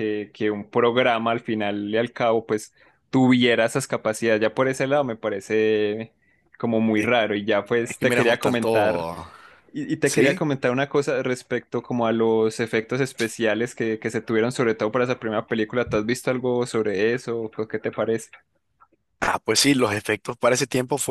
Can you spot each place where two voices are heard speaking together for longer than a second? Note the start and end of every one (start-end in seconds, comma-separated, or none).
7.8-9.1